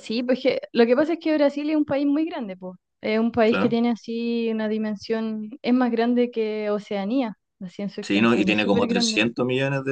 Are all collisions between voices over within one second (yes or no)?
no